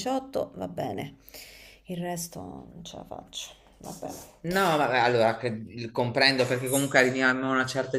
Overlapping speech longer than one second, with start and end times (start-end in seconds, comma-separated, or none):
none